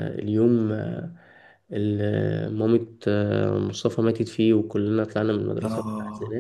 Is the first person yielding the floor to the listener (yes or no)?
yes